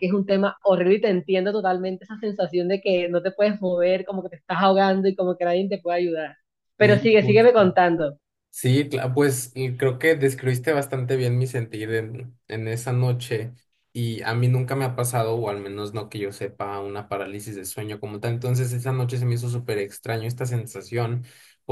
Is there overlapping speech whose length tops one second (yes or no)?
no